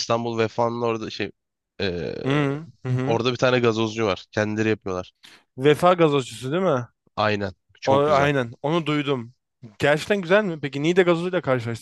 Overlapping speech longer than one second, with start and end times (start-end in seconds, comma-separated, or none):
none